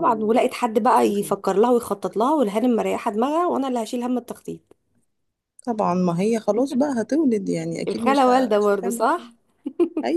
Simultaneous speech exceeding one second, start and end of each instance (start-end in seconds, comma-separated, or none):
7.9-9.3